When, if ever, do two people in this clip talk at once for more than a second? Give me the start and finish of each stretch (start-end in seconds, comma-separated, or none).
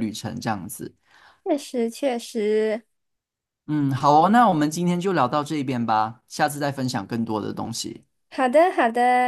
none